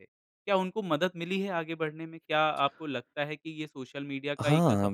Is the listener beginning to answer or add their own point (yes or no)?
yes